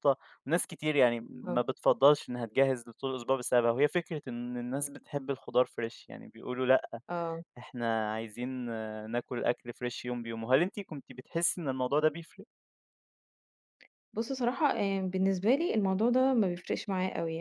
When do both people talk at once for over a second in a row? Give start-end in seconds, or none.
none